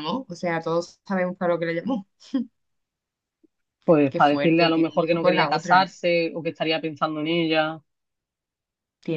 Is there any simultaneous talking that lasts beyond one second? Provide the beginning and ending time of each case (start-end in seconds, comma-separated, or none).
4.1-5.9